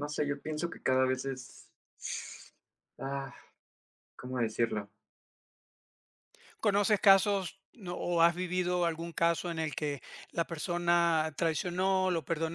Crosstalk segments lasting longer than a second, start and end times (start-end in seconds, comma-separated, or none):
none